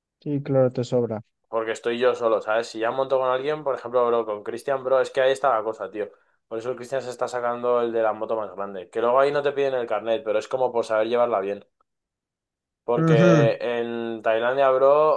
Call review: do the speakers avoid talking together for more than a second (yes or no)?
yes